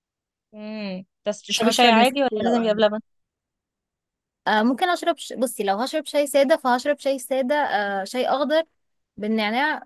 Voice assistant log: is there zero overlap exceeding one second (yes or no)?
no